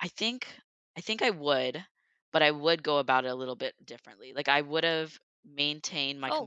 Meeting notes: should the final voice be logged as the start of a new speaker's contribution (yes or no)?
no